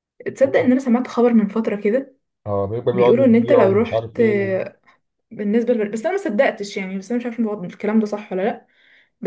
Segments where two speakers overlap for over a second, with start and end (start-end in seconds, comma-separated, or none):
2.9-4.2